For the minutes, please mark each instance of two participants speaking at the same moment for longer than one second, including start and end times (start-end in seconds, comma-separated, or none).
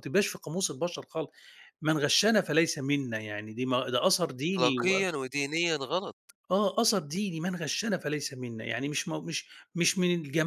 none